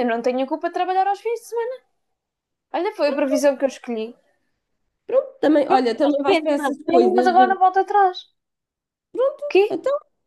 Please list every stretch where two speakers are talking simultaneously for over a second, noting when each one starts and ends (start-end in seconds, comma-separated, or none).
5.7-7.3